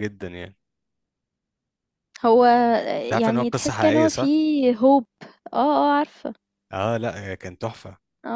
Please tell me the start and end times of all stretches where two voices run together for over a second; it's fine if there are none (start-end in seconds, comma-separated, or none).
3.0-4.3